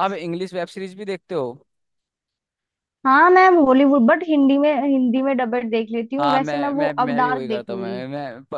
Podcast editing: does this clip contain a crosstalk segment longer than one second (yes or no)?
yes